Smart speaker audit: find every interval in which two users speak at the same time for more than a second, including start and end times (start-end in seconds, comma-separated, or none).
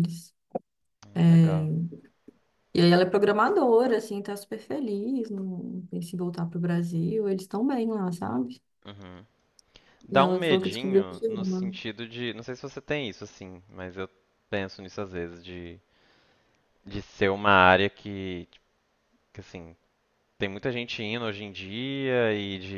10.1-11.7